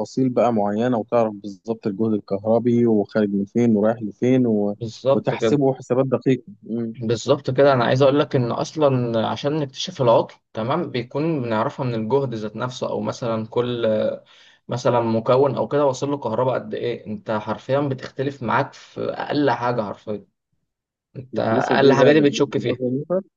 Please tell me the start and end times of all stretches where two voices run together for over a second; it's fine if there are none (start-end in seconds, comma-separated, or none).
21.3-22.8